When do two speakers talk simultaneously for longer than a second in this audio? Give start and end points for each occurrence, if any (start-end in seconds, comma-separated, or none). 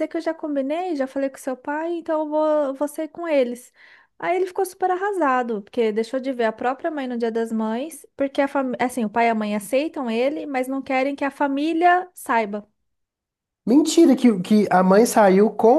none